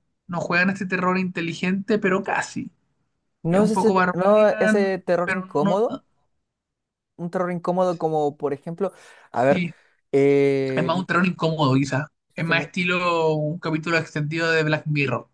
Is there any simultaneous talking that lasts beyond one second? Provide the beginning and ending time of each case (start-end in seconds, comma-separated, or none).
3.5-6.0